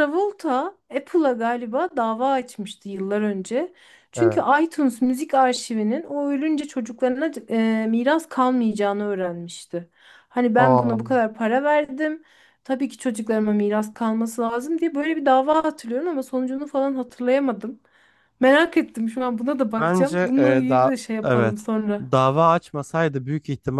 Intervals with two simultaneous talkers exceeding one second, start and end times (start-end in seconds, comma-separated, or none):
19.8-22.0